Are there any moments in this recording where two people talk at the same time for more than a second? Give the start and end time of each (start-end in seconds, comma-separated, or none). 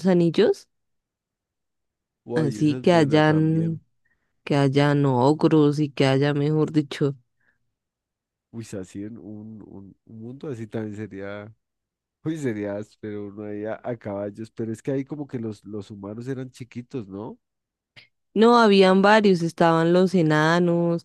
2.4-3.8